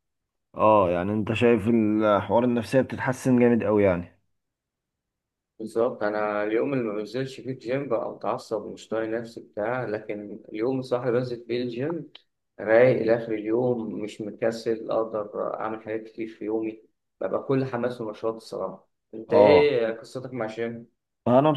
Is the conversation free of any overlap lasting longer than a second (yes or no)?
yes